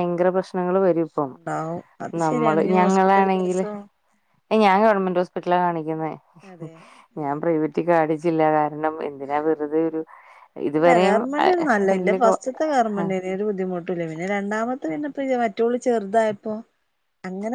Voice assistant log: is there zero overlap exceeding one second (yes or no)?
no